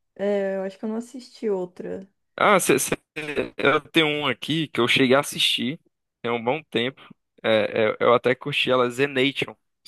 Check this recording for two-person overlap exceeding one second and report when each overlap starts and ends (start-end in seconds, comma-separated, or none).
none